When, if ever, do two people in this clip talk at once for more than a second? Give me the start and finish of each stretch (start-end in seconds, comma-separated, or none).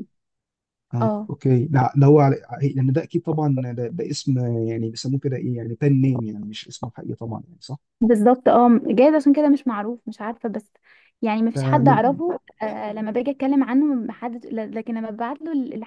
none